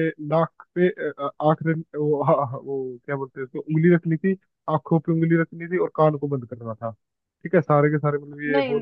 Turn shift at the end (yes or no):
no